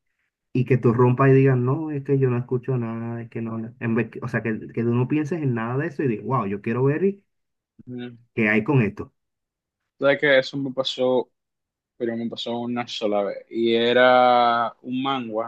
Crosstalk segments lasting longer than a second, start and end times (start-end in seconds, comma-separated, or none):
none